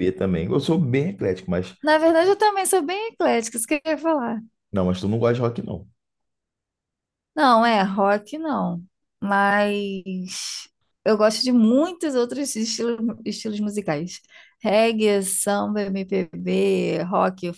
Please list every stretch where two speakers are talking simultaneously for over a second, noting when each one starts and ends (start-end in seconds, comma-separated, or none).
none